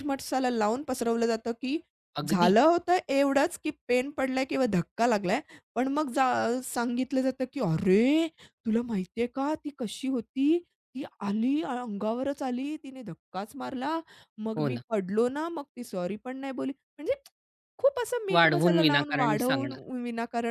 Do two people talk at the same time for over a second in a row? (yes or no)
yes